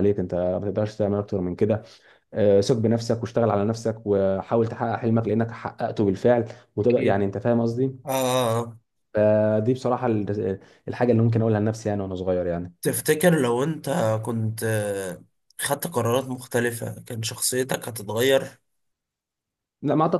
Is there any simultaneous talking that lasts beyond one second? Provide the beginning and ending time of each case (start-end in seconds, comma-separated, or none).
none